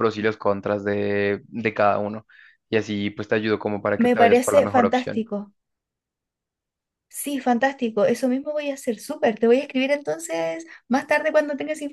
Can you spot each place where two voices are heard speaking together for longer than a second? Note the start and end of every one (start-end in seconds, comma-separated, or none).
4.0-5.2